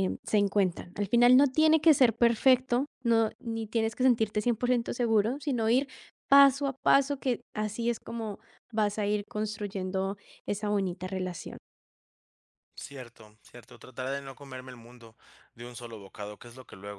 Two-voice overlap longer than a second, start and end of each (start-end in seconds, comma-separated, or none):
none